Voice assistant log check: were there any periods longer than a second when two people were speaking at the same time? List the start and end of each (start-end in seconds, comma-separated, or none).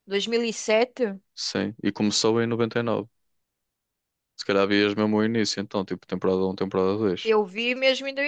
none